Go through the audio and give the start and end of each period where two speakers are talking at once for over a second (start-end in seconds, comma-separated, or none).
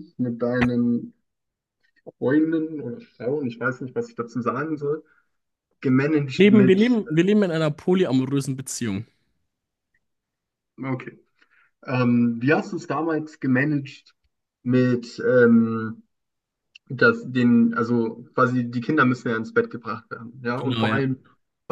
none